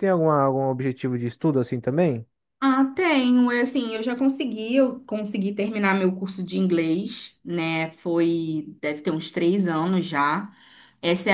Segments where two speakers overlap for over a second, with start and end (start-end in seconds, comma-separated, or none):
none